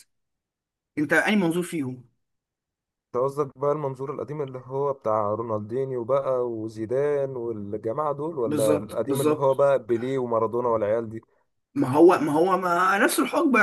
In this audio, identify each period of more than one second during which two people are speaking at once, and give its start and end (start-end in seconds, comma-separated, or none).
8.4-9.7